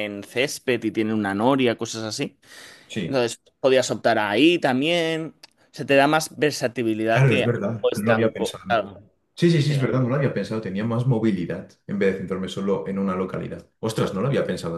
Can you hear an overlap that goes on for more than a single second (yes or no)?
yes